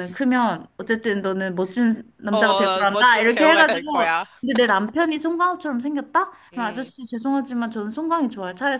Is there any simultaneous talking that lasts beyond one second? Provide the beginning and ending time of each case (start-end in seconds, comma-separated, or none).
2.3-4.3